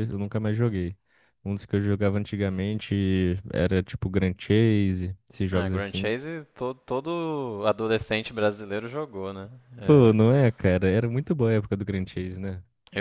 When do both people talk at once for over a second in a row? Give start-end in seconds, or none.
none